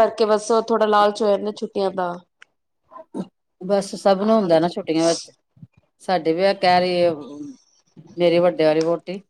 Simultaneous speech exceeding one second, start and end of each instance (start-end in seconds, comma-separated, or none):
none